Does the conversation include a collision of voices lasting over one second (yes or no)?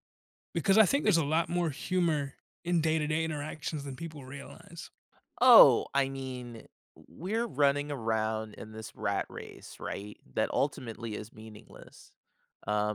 no